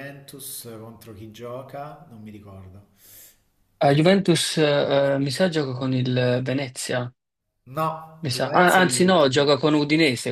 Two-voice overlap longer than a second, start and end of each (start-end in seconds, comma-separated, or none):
8.2-9.5